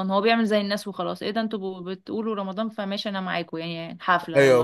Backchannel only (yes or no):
no